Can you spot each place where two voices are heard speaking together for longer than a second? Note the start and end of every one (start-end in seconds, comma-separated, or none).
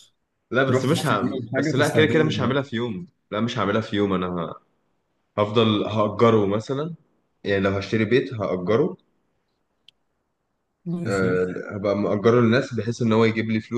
0.6-2.7